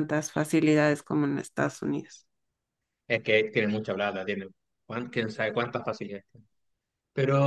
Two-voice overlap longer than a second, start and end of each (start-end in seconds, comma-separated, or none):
none